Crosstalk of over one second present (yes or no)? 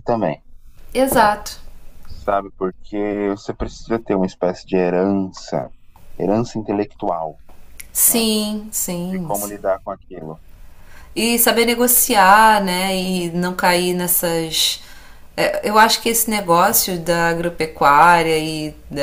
no